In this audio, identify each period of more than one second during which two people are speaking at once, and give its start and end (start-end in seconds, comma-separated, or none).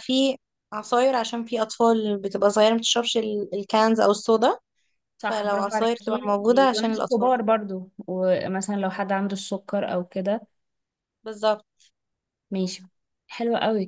5.2-7.3